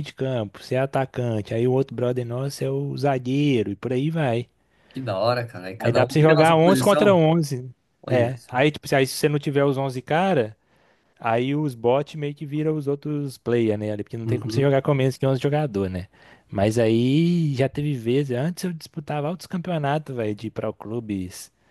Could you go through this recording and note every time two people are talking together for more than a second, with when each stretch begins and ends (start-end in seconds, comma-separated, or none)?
5.8-7.2